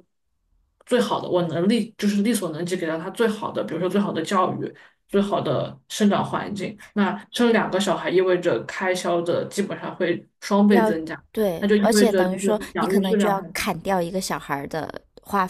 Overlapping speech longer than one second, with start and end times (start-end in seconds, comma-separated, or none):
11.6-13.5